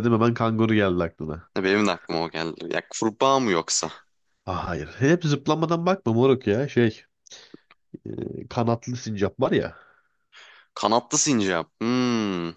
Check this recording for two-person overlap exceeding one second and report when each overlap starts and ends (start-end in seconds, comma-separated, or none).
none